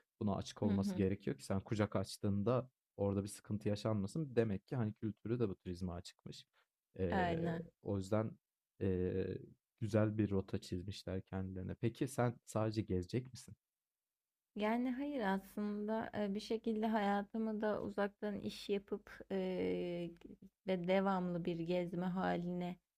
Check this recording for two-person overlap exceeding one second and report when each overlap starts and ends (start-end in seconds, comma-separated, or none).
none